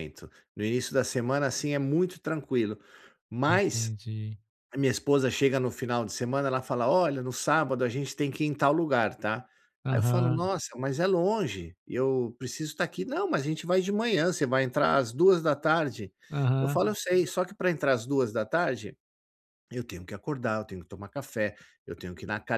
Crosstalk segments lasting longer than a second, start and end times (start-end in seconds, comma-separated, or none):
none